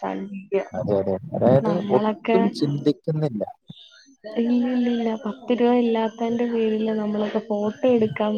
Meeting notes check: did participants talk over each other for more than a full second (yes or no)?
no